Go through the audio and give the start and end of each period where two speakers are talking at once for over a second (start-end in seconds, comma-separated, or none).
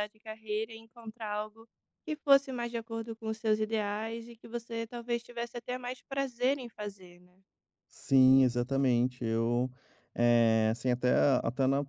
none